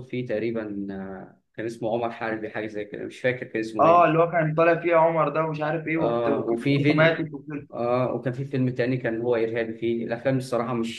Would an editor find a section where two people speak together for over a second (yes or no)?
yes